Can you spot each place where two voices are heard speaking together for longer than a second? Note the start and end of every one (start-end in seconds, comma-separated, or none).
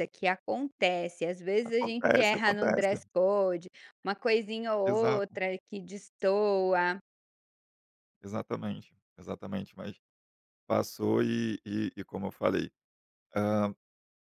1.6-3.0